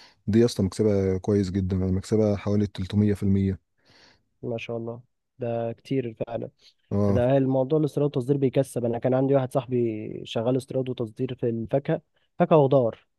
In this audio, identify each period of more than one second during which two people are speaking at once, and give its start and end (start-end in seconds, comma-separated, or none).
none